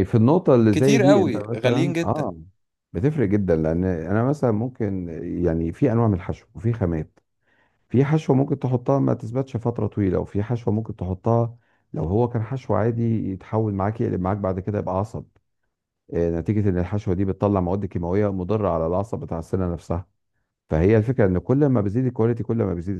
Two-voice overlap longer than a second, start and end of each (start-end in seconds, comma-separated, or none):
0.7-2.3